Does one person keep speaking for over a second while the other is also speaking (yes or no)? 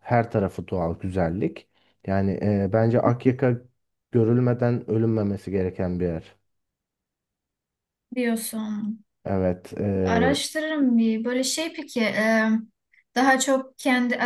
no